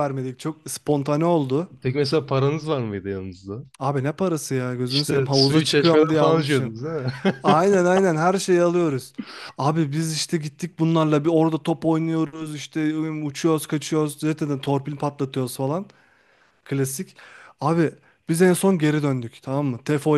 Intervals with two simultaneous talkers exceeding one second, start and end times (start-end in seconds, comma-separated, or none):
4.9-6.7